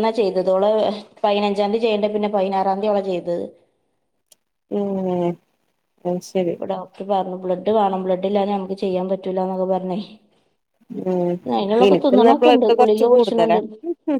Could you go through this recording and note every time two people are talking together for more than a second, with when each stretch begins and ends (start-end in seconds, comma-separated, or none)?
11.9-13.6